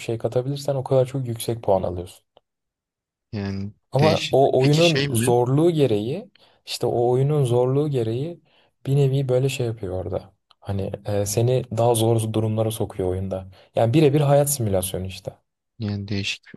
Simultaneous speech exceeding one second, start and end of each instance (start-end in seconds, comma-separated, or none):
3.9-5.3